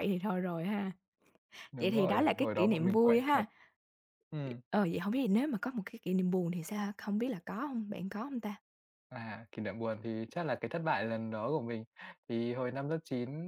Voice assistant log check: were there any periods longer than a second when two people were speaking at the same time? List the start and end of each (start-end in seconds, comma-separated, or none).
1.8-3.4